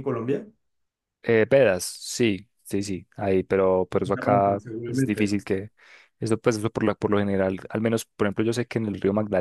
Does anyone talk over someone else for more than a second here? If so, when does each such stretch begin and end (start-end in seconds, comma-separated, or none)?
4.0-5.4